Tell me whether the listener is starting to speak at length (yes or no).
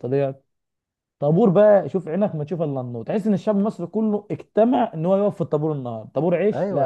yes